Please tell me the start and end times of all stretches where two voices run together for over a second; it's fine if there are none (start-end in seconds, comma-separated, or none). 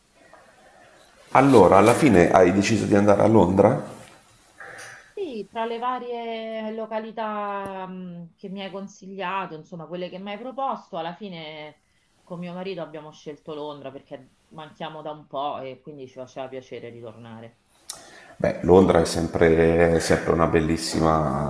none